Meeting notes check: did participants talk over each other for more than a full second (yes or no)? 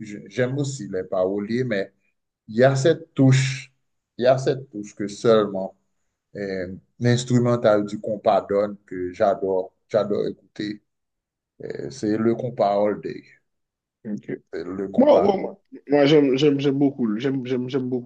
no